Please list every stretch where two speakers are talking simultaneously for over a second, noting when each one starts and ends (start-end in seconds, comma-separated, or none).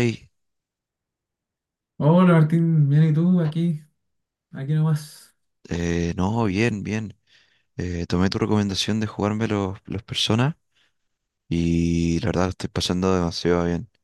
none